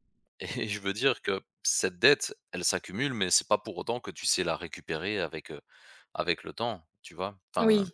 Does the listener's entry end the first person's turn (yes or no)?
yes